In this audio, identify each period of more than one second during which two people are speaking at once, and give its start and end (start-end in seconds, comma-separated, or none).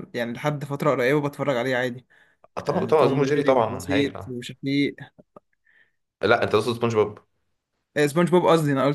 2.6-4.3